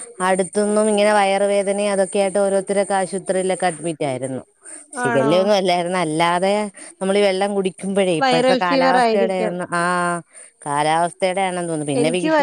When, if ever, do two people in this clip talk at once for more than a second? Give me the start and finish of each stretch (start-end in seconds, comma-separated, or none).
8.2-9.5